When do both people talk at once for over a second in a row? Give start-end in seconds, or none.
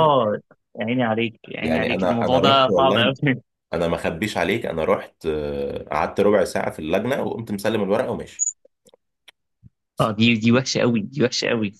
1.6-3.1